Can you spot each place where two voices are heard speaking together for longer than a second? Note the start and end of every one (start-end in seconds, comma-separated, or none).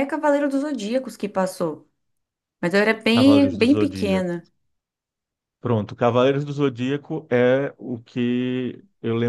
3.1-4.4